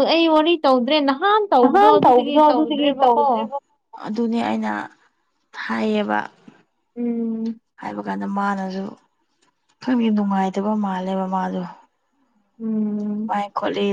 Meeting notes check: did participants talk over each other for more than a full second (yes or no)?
yes